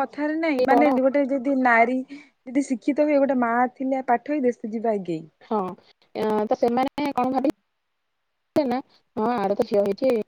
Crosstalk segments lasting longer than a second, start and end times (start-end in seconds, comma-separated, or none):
none